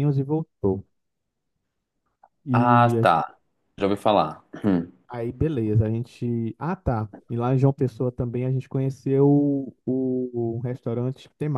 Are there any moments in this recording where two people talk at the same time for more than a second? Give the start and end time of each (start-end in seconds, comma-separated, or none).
none